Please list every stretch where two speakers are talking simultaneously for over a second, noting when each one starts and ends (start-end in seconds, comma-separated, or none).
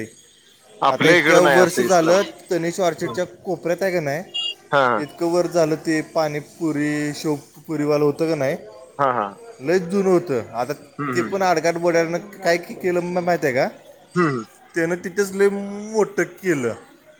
0.9-2.4